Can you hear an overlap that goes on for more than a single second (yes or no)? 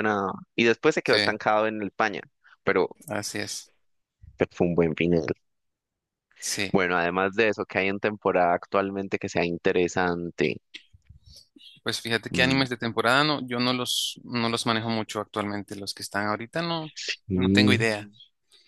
no